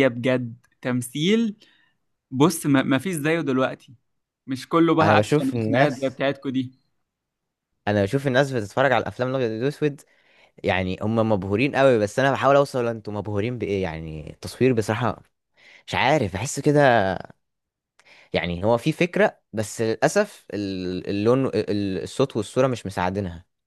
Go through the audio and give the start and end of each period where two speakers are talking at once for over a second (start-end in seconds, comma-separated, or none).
5.0-6.2